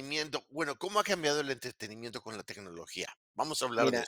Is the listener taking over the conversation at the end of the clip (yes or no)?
yes